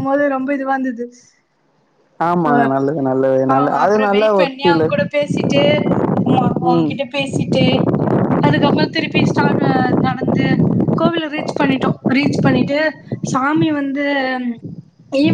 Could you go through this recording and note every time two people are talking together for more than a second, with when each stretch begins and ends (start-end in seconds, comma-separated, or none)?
2.5-4.9